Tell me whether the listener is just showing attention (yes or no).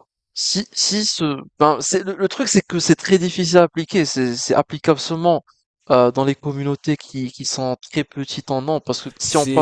no